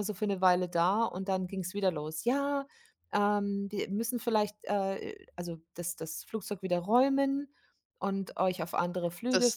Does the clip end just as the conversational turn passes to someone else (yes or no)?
yes